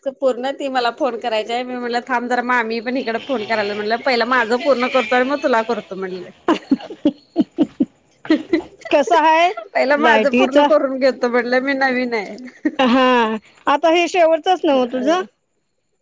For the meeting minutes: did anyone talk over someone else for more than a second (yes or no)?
no